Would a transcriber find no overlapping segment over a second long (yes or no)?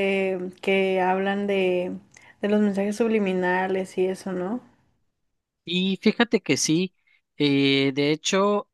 yes